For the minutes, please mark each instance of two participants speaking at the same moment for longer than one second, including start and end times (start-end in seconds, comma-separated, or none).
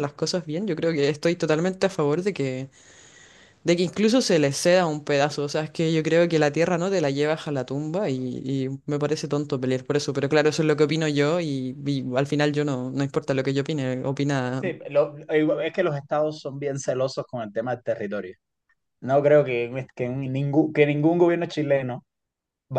none